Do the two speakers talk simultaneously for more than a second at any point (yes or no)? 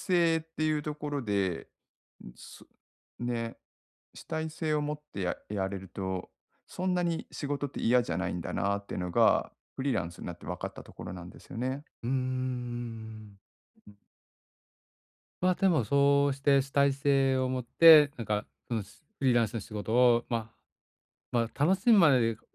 no